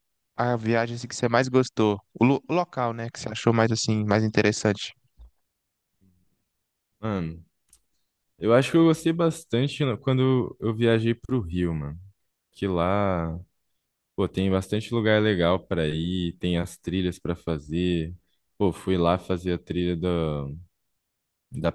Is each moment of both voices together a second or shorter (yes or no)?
yes